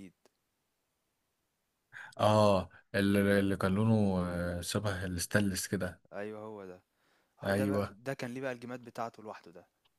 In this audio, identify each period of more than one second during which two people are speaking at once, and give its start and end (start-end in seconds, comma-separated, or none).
none